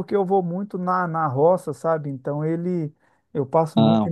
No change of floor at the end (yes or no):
yes